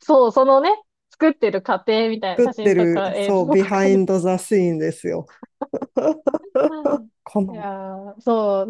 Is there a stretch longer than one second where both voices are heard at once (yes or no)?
yes